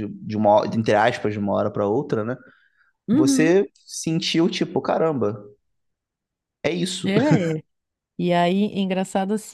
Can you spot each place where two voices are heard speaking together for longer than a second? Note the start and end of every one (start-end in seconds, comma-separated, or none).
none